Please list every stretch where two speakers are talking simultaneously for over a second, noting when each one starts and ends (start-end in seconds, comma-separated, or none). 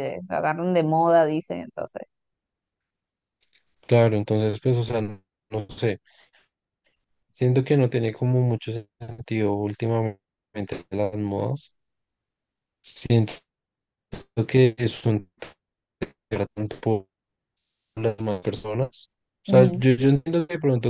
none